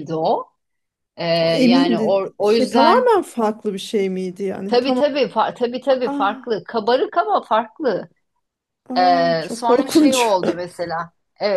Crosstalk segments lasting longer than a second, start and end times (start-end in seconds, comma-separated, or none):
1.5-3.1, 9.0-10.4